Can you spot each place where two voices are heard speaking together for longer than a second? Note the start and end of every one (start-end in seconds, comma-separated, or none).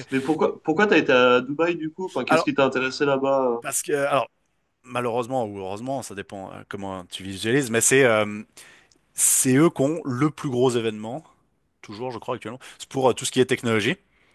none